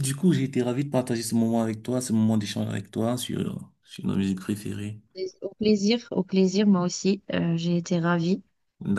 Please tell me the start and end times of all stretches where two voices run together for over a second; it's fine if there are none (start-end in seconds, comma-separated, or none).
none